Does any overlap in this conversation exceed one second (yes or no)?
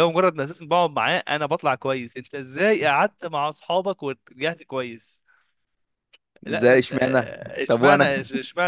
yes